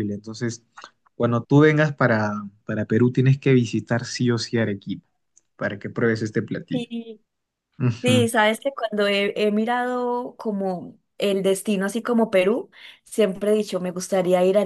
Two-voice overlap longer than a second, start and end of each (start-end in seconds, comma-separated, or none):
none